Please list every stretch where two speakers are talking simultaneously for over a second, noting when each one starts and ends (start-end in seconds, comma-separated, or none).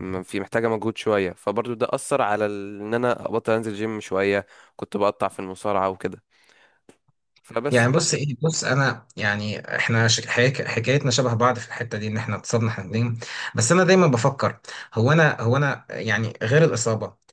none